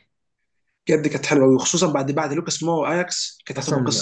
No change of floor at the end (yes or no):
no